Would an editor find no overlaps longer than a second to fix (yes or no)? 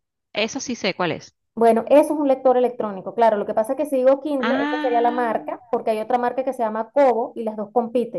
no